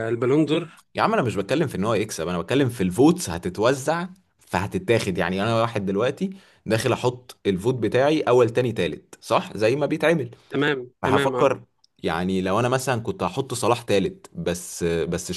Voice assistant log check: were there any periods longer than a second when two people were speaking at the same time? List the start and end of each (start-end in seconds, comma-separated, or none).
none